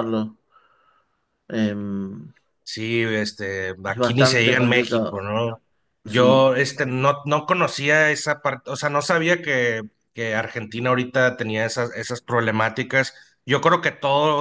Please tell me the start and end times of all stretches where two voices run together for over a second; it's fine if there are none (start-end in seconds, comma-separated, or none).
3.9-5.2